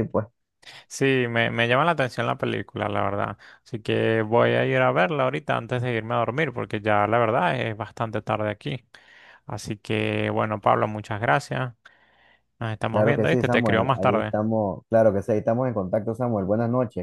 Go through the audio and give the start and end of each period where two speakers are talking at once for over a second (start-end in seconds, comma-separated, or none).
12.9-14.3